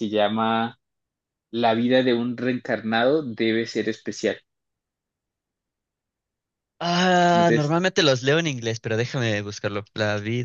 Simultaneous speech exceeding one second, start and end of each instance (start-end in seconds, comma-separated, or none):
none